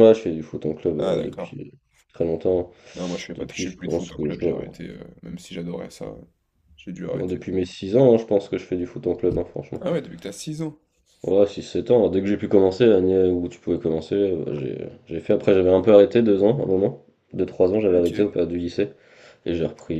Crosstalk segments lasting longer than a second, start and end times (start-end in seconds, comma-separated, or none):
3.4-4.7